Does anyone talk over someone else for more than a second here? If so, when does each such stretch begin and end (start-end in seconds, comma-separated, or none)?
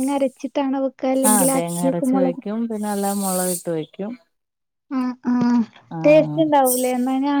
none